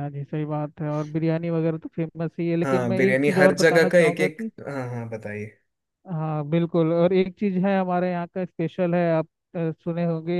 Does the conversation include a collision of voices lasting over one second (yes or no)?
yes